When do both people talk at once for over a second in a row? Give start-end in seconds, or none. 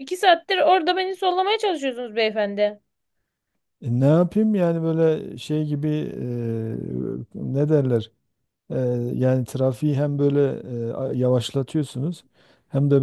none